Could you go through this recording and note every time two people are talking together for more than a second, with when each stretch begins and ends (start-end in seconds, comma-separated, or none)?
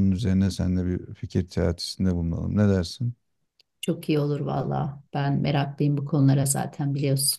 none